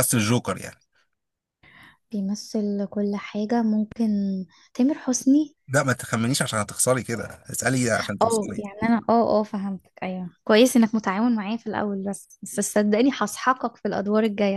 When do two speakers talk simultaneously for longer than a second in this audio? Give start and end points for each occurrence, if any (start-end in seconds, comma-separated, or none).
none